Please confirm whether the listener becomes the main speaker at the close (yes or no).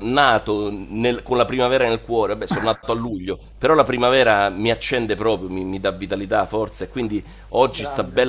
no